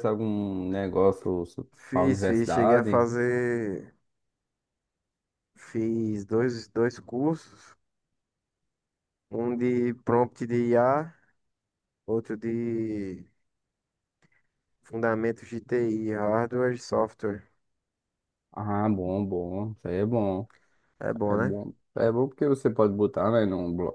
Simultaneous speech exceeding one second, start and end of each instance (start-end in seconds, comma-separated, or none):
1.8-3.1